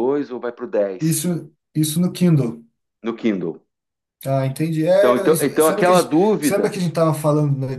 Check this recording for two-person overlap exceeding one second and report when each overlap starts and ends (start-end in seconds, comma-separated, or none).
5.0-6.8